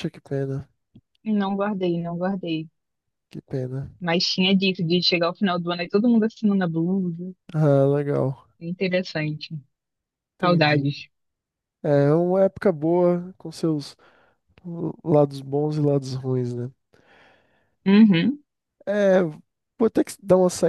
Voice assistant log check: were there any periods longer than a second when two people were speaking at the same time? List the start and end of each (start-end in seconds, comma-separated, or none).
none